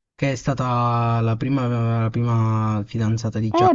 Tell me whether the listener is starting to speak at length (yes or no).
yes